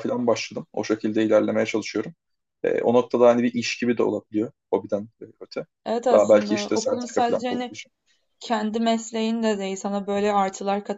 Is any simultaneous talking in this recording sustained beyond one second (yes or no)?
yes